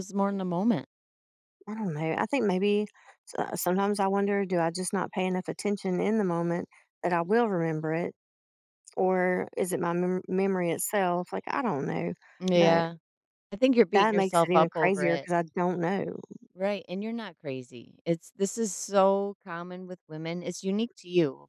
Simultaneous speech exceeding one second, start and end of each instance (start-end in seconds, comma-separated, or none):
13.9-15.3